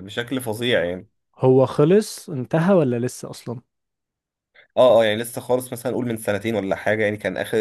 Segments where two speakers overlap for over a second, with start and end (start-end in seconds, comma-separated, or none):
none